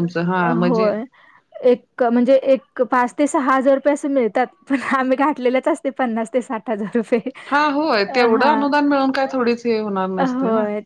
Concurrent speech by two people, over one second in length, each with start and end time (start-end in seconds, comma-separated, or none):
none